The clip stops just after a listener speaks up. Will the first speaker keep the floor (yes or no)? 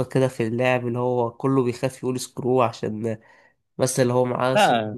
no